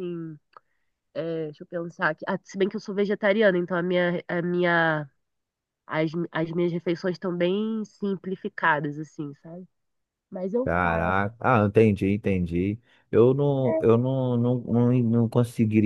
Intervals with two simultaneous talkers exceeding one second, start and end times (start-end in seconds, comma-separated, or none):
none